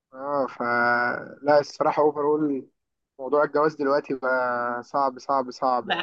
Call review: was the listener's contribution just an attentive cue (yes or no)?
no